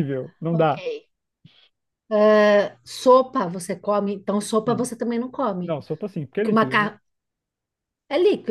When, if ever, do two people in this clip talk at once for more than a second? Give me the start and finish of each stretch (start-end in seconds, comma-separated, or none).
none